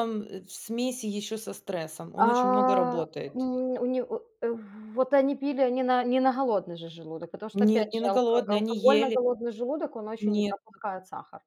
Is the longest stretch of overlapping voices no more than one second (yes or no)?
no